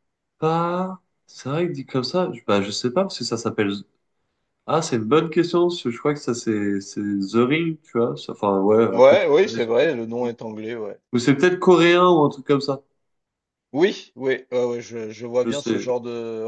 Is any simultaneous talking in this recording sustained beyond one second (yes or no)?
yes